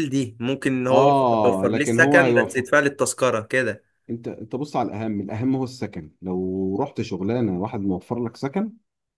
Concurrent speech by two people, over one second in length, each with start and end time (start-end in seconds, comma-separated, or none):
0.9-2.6